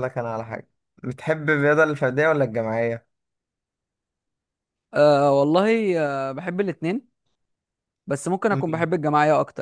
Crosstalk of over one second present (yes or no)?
no